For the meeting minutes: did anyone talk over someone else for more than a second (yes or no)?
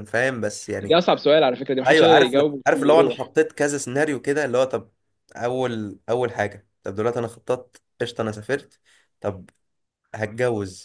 yes